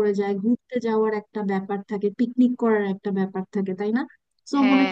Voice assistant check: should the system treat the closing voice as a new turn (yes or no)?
no